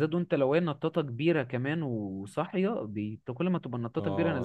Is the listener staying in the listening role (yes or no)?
no